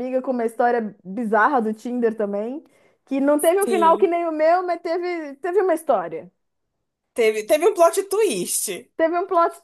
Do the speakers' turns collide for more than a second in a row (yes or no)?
no